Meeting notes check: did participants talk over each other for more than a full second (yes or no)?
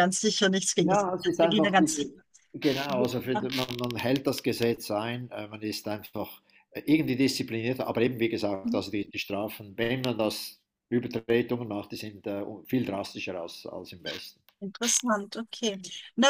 yes